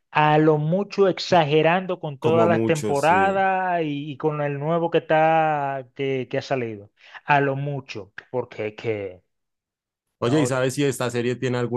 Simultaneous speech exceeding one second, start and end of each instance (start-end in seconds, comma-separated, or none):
2.2-3.5